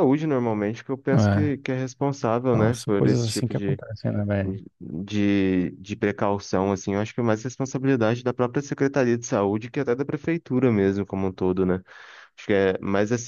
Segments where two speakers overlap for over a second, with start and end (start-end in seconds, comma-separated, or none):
2.5-3.8